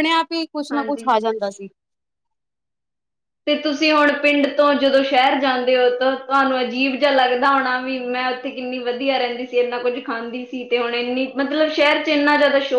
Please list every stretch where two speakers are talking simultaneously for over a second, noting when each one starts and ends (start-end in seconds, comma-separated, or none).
none